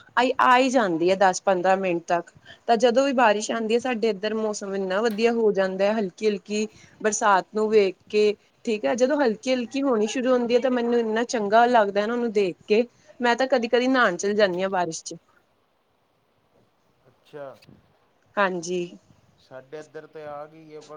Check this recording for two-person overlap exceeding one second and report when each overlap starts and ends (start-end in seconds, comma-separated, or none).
none